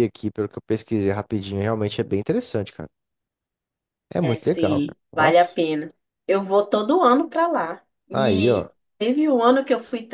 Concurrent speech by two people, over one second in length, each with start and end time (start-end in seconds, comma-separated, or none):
4.2-5.6